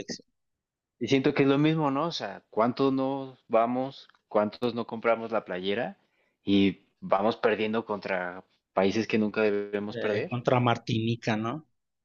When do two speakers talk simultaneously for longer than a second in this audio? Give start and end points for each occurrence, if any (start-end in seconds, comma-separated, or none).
none